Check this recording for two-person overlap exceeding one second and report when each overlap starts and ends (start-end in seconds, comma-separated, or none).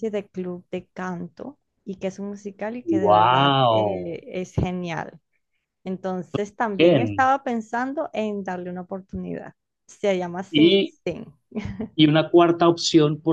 2.9-4.2